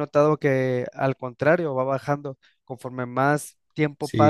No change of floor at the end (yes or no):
no